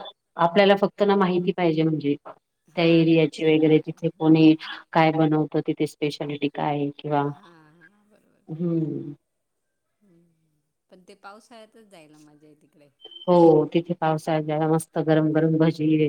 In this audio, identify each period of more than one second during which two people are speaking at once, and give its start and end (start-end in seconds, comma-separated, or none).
2.8-4.2